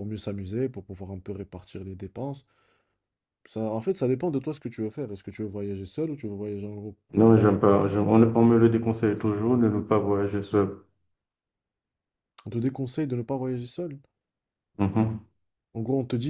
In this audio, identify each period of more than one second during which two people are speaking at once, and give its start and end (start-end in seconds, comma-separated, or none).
none